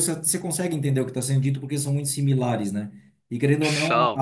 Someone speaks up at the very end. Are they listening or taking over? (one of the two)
listening